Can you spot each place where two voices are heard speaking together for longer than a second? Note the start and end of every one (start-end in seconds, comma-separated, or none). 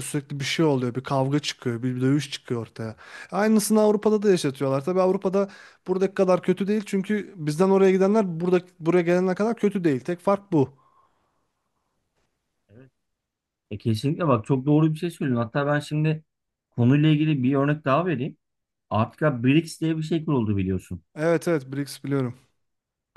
none